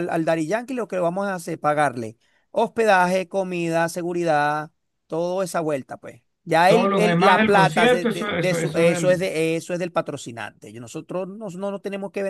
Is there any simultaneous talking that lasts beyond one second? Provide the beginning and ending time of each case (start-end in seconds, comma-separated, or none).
6.7-9.3